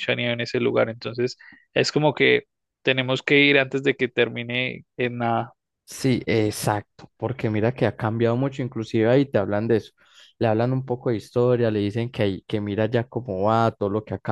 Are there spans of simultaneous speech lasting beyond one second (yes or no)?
no